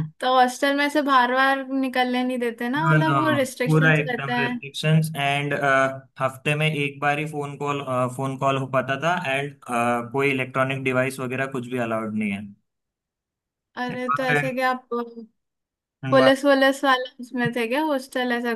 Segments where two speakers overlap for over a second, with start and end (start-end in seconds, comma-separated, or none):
2.8-4.6